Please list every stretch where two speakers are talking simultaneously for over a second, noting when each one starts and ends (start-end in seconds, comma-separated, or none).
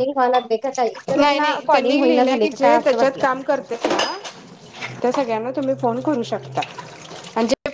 1.2-3.2